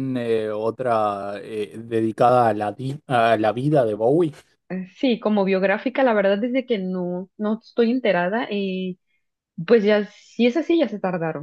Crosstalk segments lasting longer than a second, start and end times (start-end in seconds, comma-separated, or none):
none